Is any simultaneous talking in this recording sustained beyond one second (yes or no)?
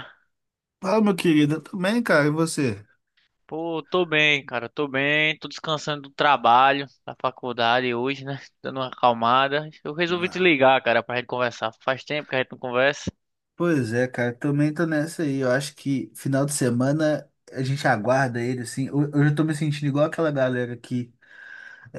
no